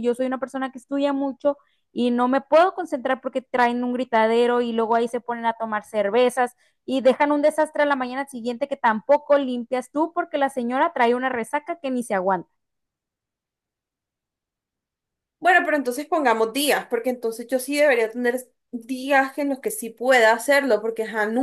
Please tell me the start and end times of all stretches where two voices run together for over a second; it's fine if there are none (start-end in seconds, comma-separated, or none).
none